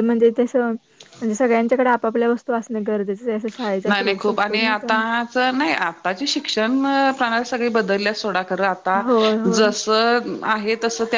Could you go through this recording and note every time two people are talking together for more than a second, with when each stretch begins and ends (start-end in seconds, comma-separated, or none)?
none